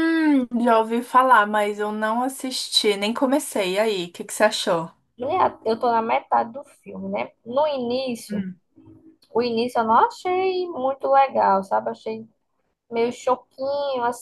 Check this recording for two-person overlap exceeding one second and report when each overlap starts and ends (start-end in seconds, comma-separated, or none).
none